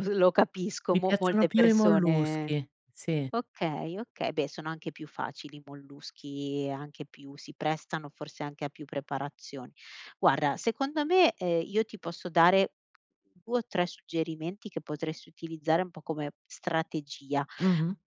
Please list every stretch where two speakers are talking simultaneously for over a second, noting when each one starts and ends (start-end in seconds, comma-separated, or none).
0.9-2.5